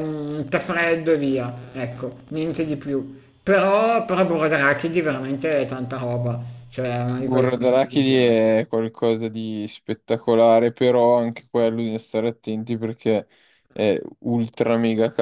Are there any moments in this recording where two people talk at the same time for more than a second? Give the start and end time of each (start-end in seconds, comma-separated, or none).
7.2-8.4